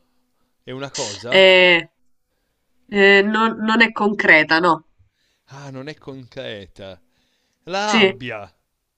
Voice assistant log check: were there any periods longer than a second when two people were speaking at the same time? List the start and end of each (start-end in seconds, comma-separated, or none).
none